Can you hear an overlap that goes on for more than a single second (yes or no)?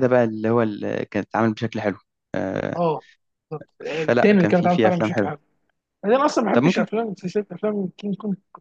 yes